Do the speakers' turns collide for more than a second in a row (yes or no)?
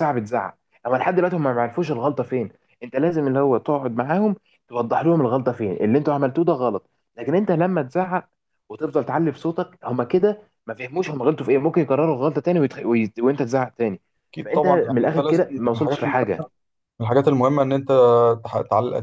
yes